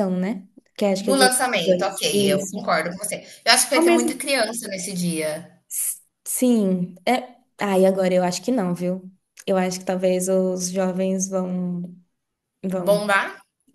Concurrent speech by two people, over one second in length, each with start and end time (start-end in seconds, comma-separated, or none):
1.0-2.5